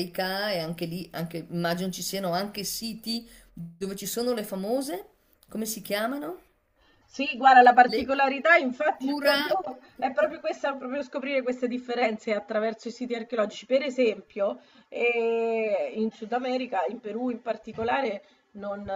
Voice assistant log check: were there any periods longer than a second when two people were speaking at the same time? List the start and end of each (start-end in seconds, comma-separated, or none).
none